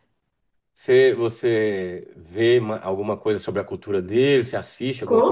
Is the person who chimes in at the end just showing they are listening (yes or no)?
no